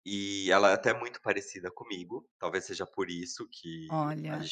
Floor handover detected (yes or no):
no